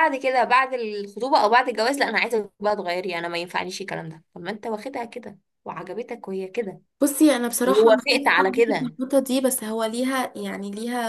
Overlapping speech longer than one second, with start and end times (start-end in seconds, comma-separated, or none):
7.6-9.0